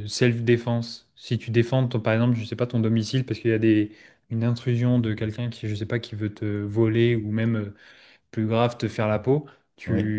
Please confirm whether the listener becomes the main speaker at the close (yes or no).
no